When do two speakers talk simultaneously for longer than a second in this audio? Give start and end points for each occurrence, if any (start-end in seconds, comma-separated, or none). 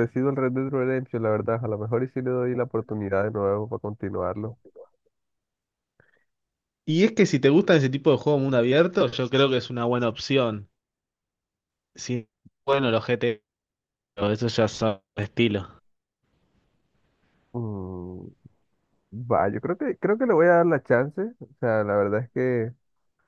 none